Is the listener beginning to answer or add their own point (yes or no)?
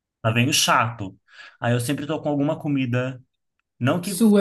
no